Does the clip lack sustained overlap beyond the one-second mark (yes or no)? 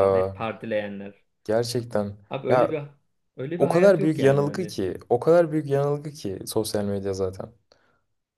no